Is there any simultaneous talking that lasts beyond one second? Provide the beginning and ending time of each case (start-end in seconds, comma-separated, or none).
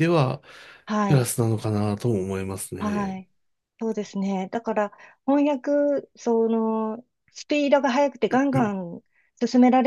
none